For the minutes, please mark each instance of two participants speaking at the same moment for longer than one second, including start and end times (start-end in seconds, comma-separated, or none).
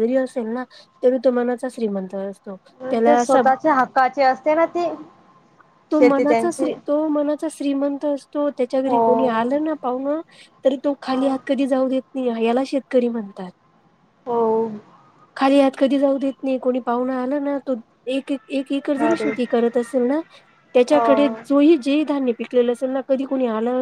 none